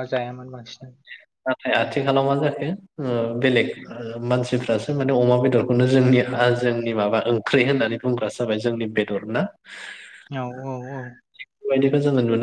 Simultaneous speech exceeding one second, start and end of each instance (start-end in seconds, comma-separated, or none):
none